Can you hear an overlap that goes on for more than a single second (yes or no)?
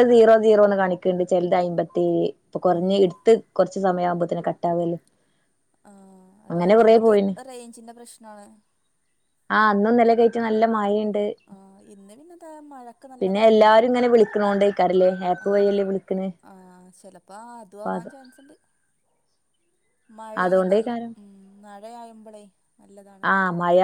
no